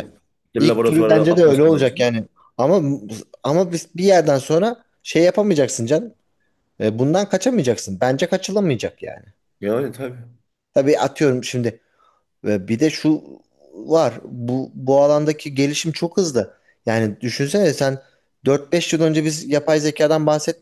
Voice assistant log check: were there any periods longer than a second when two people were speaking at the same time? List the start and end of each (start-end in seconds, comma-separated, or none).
0.6-2.0